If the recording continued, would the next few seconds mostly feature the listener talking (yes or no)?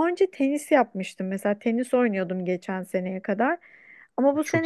no